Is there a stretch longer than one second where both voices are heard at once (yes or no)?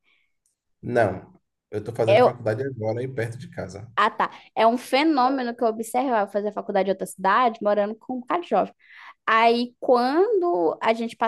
no